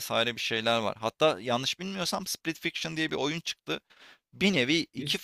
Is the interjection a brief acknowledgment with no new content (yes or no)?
yes